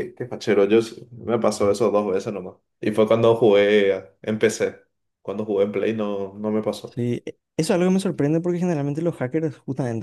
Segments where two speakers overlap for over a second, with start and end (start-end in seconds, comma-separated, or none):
none